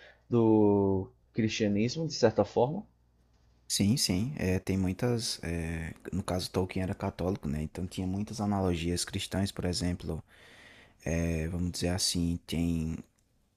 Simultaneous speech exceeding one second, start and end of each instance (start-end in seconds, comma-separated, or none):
none